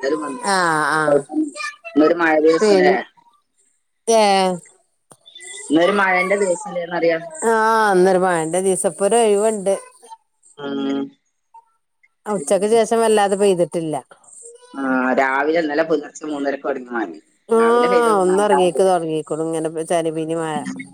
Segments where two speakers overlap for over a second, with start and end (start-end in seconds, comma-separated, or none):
none